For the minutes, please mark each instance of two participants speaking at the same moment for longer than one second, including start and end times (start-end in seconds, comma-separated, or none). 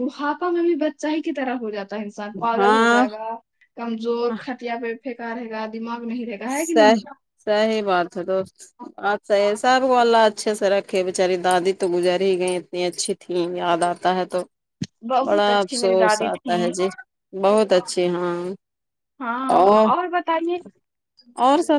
15.3-16.6